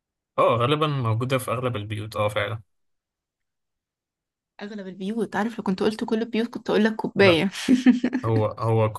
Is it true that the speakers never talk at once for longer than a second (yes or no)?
yes